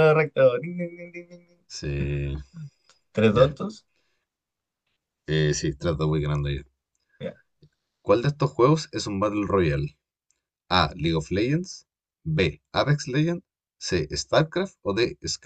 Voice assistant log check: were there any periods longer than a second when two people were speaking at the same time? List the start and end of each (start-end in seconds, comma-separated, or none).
none